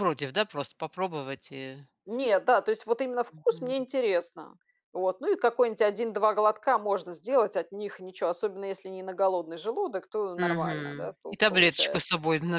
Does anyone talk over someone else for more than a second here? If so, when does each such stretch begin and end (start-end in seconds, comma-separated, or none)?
10.4-12.1